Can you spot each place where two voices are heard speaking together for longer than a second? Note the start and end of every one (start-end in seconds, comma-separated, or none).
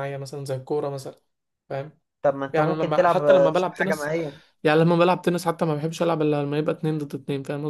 2.5-4.1